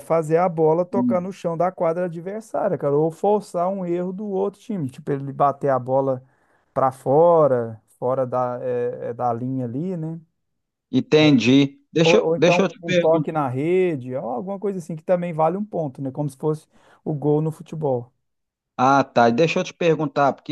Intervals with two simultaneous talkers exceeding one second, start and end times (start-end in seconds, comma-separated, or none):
12.0-13.3